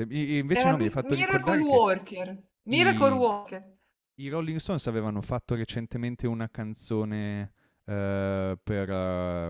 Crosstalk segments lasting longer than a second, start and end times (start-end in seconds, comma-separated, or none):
0.6-1.8